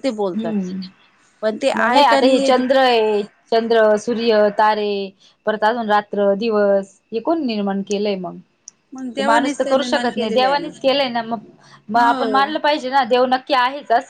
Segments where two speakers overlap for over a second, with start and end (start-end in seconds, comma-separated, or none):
9.2-10.6